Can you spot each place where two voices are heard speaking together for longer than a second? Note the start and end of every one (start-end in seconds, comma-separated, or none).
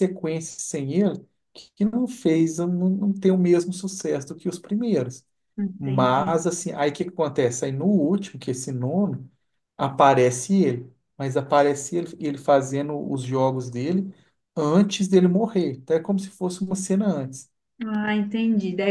none